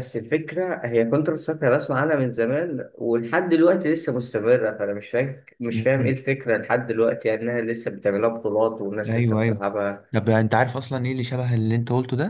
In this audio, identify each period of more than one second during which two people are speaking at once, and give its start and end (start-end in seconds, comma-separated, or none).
none